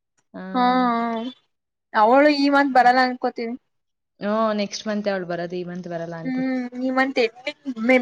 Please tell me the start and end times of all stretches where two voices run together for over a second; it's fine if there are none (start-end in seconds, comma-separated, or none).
none